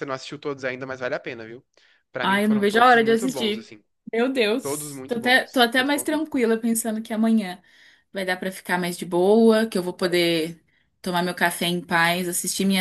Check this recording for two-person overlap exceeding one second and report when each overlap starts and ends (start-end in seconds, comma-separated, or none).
2.2-3.7, 4.6-6.3